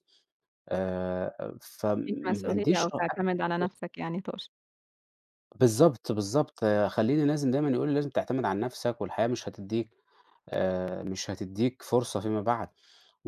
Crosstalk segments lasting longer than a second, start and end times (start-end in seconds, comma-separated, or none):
2.0-3.3